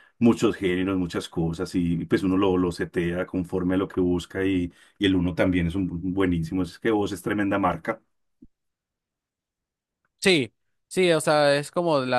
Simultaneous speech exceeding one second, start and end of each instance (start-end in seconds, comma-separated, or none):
none